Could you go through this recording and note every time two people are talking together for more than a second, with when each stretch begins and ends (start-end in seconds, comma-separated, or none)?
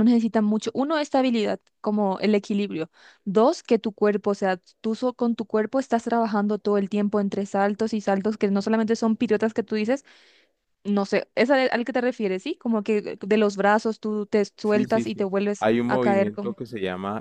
14.6-16.6